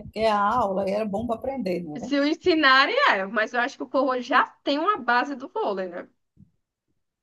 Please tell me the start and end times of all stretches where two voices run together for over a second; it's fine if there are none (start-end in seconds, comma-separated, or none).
none